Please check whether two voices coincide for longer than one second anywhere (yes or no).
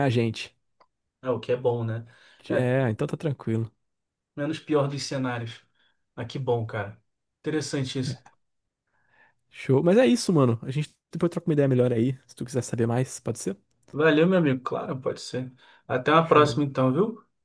no